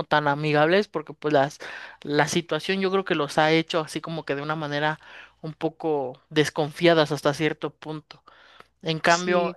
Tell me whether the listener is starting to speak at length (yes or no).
no